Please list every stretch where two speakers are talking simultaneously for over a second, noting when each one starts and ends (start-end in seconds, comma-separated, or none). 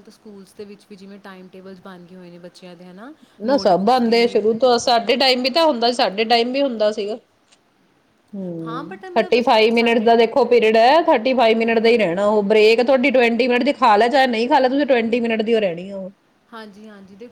8.7-10.1